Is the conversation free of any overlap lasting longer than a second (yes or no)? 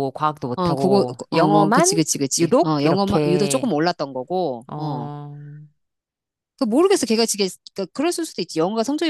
no